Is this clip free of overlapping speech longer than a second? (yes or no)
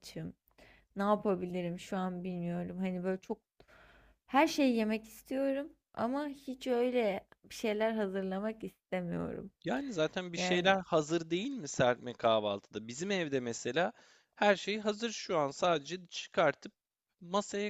yes